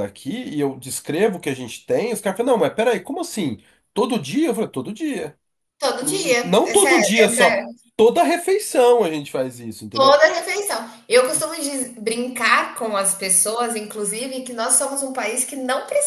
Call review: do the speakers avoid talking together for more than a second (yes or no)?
no